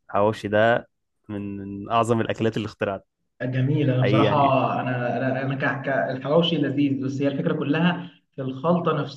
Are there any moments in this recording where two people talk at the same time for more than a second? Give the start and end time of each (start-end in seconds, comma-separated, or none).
none